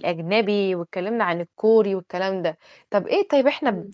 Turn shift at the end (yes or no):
no